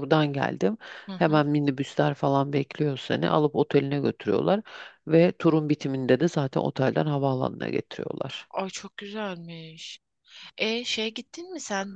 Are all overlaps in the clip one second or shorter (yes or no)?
yes